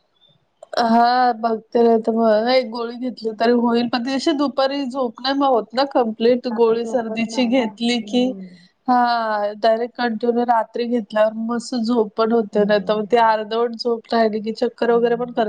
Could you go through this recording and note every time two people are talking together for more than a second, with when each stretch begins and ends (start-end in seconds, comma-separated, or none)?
6.6-8.3